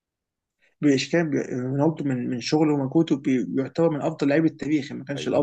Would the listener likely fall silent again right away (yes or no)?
no